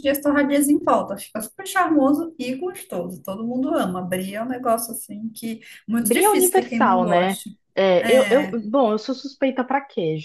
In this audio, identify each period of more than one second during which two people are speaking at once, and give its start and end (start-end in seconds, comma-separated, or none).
6.0-7.4